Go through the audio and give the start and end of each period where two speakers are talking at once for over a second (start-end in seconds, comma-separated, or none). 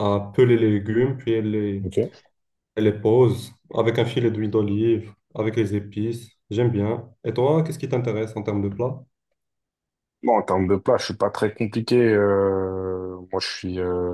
none